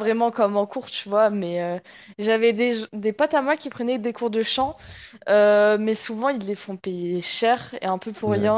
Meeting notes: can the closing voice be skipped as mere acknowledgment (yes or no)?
yes